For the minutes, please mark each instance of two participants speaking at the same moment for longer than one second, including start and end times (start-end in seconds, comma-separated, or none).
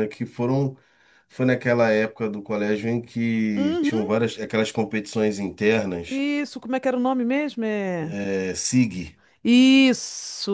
none